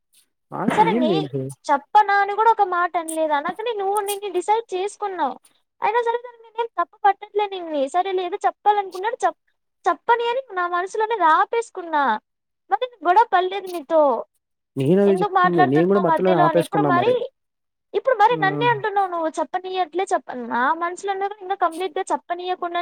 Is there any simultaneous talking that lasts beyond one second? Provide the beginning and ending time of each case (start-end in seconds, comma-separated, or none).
15.1-16.9